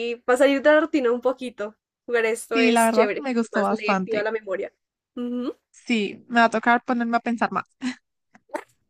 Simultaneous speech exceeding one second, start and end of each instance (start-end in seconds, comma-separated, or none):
2.5-4.3